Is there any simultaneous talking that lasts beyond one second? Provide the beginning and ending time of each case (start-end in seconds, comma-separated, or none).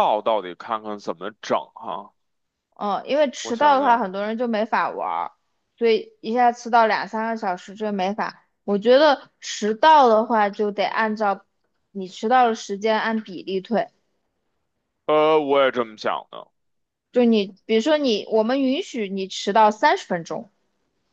none